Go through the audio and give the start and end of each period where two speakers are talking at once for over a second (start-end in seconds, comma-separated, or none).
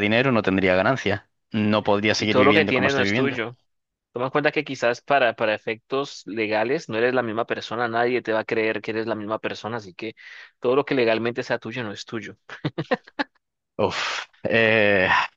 2.2-3.4